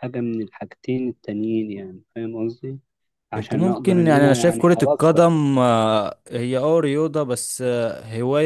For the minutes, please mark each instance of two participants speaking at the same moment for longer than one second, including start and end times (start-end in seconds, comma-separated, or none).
3.4-5.2